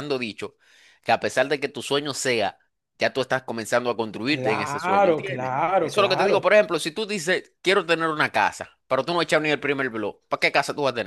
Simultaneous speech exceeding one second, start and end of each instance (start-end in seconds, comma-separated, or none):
4.2-6.5